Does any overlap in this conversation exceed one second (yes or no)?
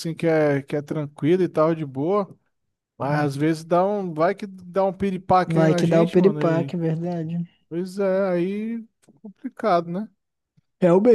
yes